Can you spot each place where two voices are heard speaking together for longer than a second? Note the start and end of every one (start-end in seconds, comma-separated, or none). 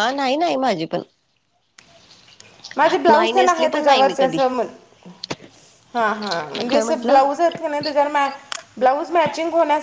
3.1-4.4